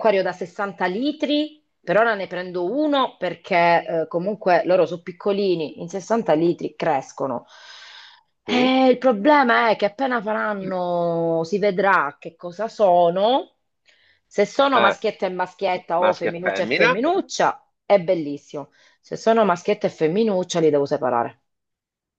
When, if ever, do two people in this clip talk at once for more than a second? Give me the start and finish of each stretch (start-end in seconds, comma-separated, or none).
15.8-17.1